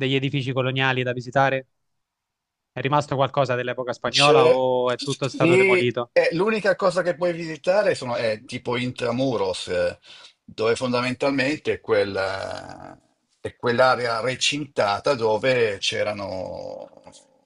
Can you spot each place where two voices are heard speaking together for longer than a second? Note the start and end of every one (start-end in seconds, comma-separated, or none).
4.1-6.1